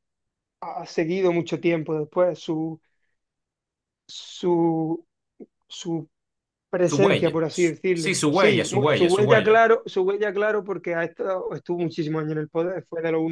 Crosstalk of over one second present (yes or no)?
yes